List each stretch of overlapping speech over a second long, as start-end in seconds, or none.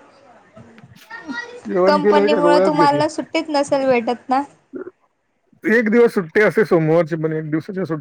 none